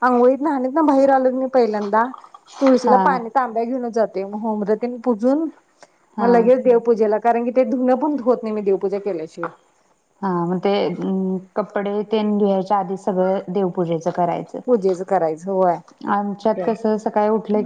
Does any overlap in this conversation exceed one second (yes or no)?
no